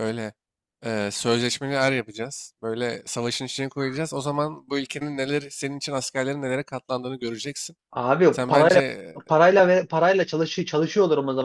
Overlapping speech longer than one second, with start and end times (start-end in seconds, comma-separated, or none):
none